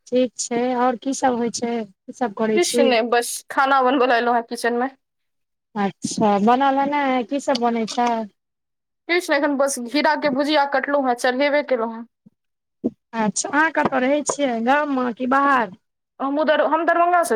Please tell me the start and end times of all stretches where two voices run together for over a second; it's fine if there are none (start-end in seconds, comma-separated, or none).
none